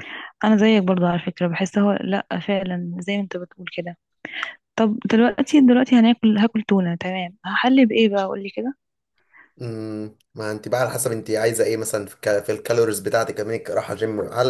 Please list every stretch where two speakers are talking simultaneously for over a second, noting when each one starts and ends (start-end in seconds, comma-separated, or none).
none